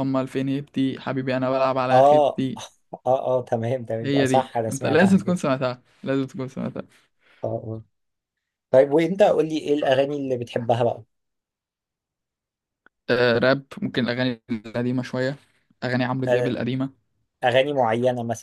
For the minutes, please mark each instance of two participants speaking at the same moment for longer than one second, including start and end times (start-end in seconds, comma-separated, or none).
4.0-5.4